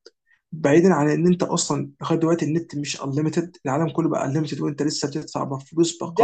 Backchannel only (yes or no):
no